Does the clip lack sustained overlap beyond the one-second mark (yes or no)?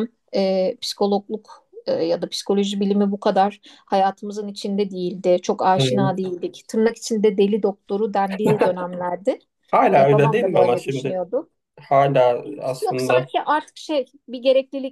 no